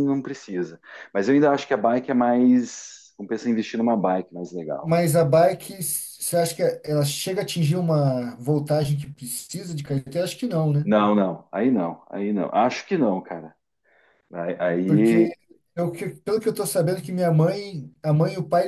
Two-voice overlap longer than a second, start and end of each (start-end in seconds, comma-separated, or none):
none